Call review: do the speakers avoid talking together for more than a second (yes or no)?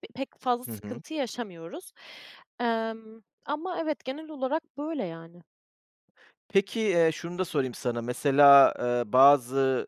yes